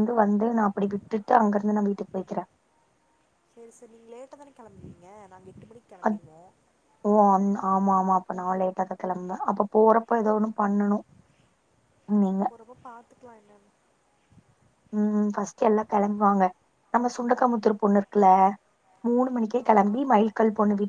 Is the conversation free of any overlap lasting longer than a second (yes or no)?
yes